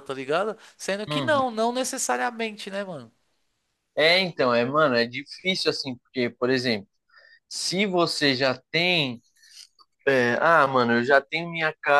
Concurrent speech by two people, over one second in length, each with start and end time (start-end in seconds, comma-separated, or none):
none